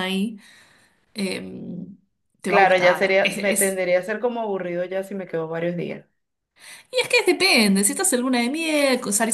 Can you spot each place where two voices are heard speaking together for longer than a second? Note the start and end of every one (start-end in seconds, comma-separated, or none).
2.5-3.8